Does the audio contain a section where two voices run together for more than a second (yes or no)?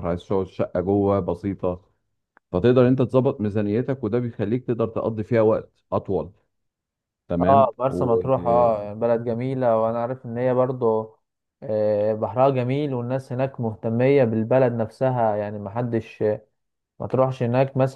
yes